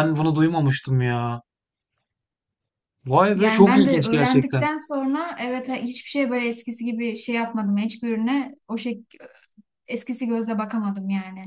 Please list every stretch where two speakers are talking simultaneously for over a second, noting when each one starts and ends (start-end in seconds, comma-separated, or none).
3.3-4.7